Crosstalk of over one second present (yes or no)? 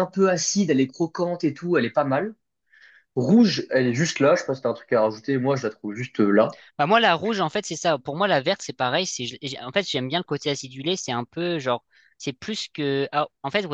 no